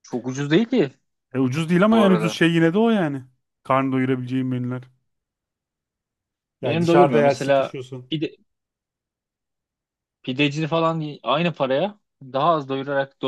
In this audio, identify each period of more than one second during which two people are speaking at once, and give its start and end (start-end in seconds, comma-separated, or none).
6.6-8.1